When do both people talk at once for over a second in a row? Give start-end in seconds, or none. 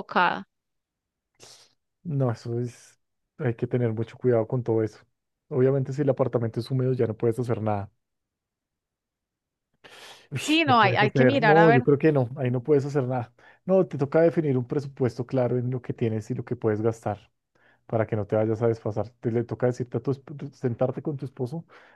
10.4-11.8